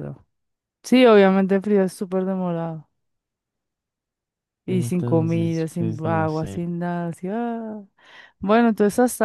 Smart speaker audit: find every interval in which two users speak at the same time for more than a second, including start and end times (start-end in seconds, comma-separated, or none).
4.7-6.6